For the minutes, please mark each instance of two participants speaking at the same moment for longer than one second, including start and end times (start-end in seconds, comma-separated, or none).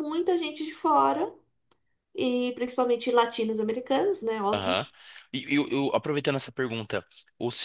none